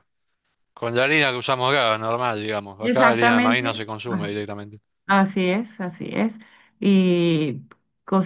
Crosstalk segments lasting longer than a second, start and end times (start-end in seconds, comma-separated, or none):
2.8-4.3